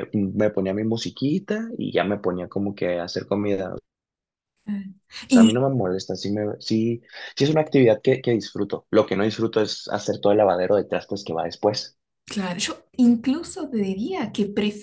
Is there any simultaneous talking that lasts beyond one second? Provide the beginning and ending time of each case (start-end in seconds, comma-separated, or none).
none